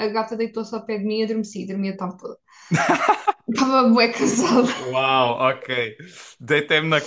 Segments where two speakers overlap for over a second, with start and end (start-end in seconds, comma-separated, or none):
none